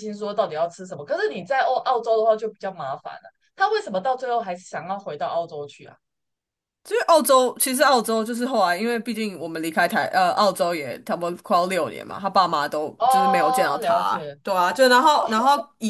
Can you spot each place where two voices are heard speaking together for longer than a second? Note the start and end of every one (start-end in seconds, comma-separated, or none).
13.0-14.2